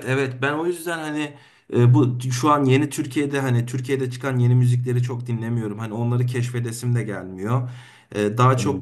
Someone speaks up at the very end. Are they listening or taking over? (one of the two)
listening